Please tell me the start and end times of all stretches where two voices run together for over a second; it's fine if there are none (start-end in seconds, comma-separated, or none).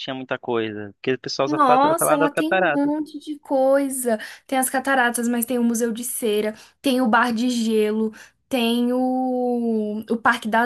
1.4-2.9